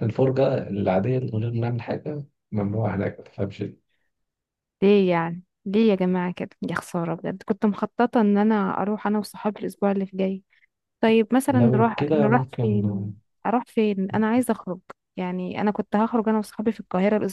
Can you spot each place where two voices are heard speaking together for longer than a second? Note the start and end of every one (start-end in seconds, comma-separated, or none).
11.5-12.8